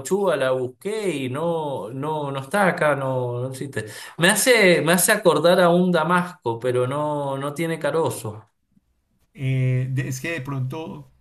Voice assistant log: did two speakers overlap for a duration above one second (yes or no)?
no